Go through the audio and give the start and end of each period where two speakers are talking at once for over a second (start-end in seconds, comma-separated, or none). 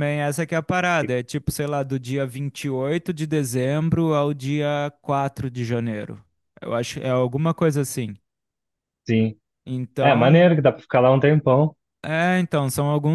none